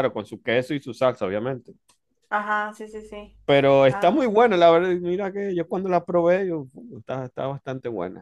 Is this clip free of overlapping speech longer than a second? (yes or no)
yes